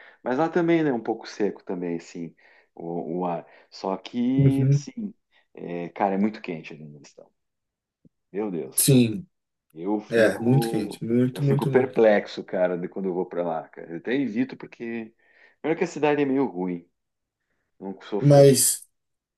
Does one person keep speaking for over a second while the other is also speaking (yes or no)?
yes